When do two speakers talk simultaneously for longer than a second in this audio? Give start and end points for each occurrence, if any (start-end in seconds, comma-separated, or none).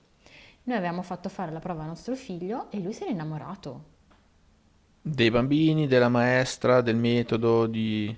none